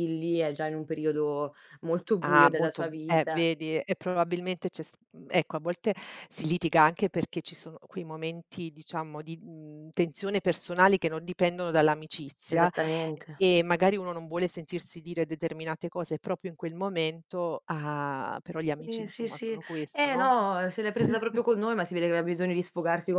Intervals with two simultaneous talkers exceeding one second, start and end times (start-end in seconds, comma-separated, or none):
2.2-3.5, 18.8-20.3